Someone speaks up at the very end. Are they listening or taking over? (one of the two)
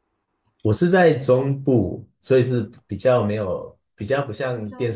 listening